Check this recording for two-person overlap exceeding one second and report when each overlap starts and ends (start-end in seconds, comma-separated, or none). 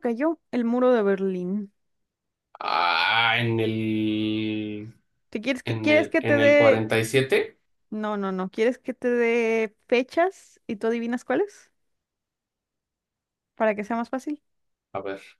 5.6-6.8